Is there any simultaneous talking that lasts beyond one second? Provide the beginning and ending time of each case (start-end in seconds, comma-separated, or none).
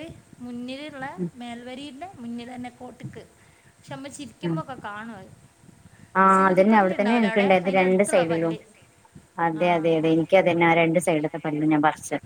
6.4-8.5